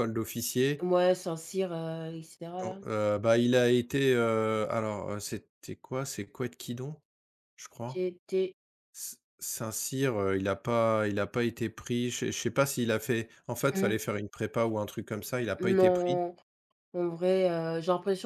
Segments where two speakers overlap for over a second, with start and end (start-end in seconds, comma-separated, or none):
none